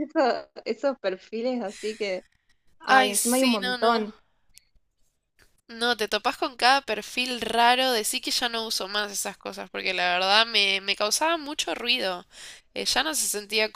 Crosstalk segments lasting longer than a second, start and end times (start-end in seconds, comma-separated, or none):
2.9-4.1